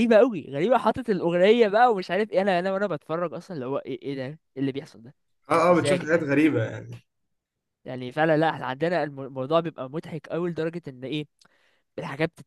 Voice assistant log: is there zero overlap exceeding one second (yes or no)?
yes